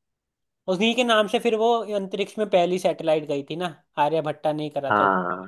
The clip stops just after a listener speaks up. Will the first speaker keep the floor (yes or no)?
no